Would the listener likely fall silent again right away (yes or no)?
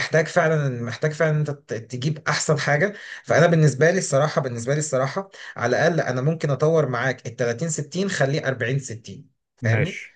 yes